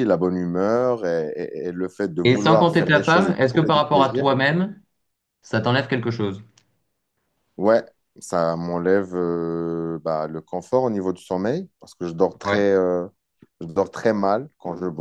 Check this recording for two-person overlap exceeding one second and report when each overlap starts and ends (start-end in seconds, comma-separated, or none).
2.2-4.3